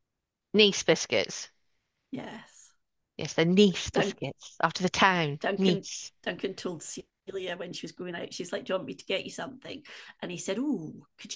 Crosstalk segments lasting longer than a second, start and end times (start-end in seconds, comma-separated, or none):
none